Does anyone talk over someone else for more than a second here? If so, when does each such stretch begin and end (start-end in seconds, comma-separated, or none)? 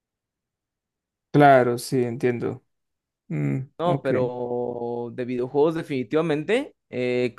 none